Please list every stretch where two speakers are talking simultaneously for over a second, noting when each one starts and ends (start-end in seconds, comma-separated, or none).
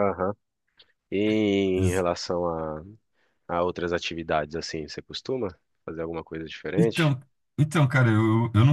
none